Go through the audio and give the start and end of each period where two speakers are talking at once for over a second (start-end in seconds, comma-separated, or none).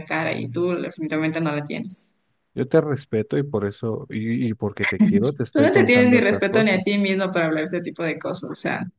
5.5-6.8